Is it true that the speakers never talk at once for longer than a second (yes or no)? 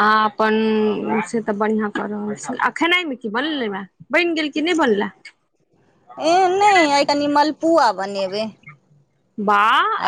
yes